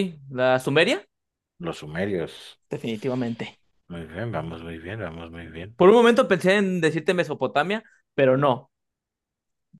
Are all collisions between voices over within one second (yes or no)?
yes